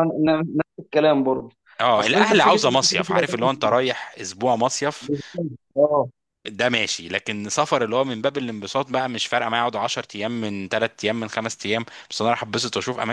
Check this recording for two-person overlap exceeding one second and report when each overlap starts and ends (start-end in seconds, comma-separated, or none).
2.0-3.5